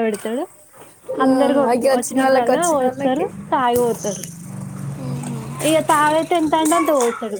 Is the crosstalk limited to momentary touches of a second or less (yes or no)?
no